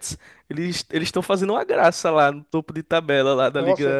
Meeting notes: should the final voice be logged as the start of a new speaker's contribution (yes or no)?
yes